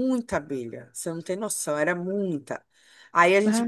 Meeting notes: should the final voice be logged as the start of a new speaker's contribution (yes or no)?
no